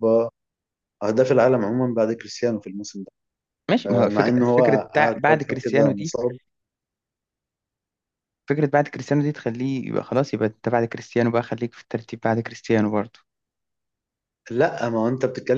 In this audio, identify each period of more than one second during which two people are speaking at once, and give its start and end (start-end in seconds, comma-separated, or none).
3.9-6.1